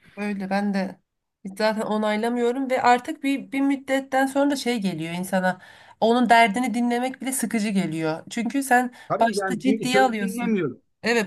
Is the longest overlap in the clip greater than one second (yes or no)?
yes